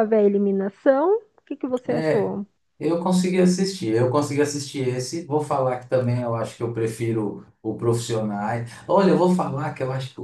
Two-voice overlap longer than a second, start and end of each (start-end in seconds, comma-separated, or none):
none